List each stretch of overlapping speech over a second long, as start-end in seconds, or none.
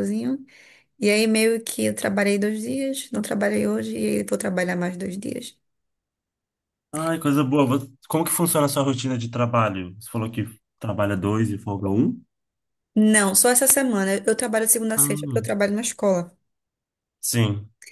none